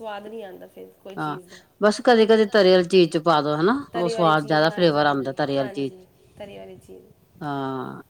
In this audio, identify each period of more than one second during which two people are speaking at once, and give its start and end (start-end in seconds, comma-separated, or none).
3.9-6.0